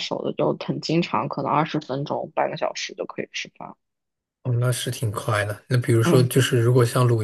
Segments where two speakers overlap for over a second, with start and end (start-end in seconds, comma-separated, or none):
none